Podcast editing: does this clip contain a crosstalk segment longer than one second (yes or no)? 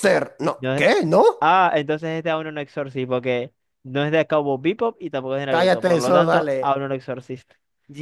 yes